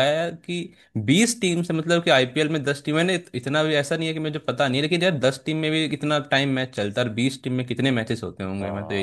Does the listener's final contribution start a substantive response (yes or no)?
yes